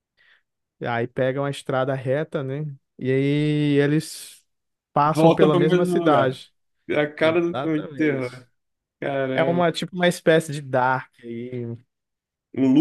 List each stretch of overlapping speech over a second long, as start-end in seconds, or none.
5.1-6.4, 7.2-8.4